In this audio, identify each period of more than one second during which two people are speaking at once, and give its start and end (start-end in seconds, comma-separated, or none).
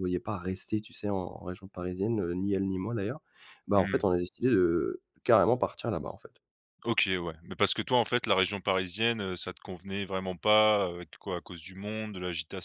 none